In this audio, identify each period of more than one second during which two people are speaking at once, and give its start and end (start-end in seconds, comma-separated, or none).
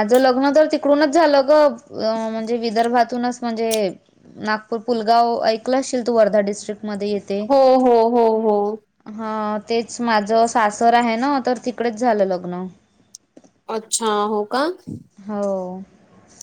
none